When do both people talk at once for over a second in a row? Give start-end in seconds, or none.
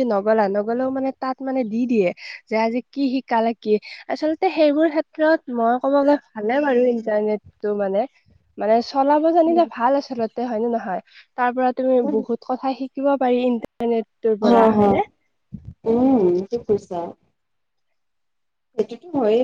none